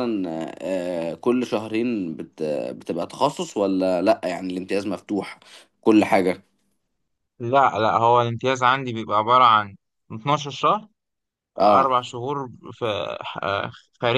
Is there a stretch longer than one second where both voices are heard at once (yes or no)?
no